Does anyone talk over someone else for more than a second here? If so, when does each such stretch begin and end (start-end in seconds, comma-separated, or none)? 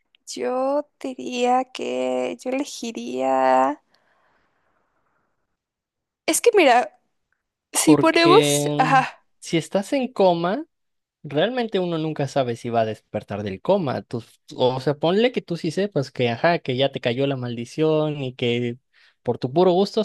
7.8-9.0